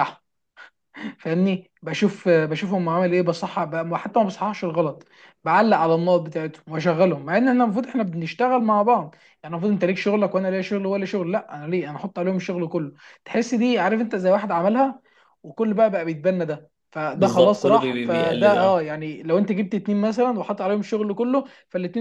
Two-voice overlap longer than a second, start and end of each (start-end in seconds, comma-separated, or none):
17.1-18.9